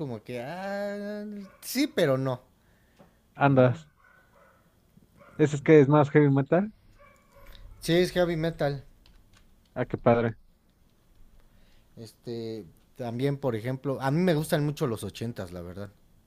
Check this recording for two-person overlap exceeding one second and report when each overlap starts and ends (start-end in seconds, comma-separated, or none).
none